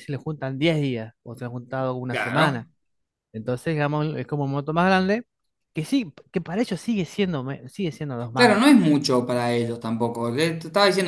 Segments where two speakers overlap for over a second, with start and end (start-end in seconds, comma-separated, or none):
none